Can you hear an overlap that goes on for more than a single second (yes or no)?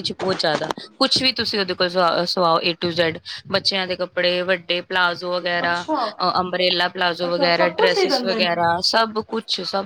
yes